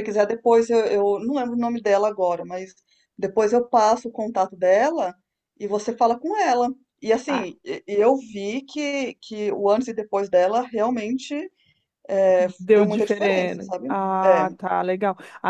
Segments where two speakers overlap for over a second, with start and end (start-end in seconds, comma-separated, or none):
12.6-14.6